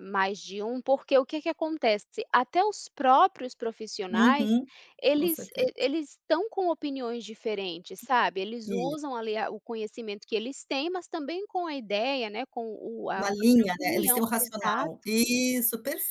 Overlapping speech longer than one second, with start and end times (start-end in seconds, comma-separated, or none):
13.1-15.1